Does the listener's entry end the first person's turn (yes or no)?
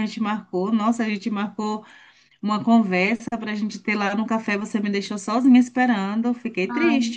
yes